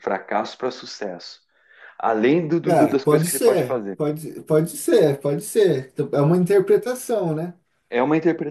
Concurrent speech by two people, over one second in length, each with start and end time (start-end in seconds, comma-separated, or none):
2.6-4.0